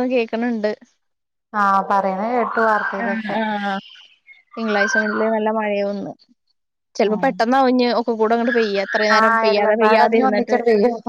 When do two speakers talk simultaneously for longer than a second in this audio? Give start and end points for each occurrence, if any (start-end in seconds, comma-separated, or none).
9.2-10.6